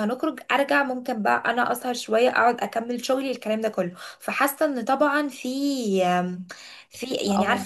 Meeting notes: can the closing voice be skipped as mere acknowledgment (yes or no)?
no